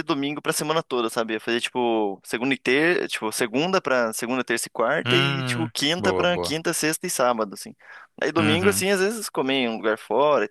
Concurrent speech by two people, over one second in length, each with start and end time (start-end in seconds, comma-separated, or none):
5.0-6.6